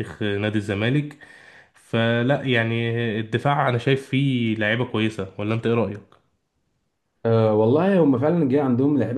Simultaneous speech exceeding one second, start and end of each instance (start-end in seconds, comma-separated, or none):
none